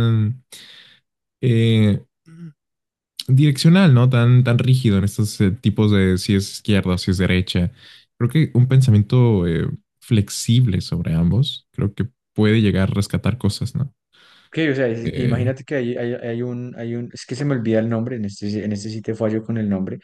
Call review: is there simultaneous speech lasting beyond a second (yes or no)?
no